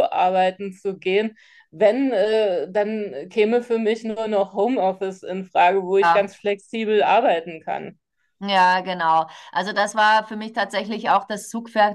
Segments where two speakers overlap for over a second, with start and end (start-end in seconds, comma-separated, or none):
none